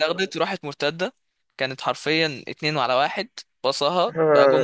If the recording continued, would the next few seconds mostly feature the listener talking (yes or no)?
yes